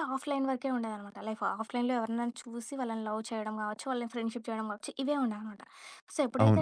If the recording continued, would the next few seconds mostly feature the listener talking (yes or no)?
no